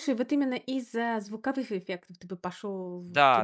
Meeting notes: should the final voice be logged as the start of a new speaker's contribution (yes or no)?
yes